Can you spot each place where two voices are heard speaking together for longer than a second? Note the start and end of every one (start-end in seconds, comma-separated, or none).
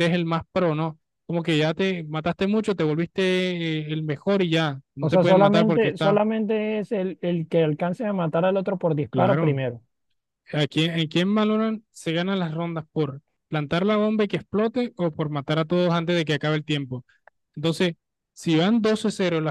5.0-6.2